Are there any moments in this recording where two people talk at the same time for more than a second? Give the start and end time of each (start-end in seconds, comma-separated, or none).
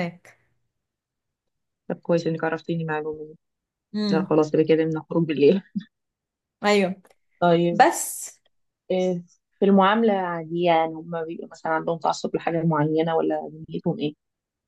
none